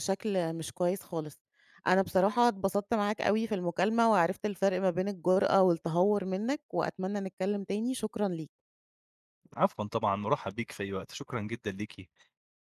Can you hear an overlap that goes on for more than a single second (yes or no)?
no